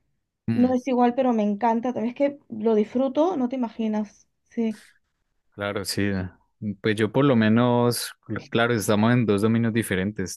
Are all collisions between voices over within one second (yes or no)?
yes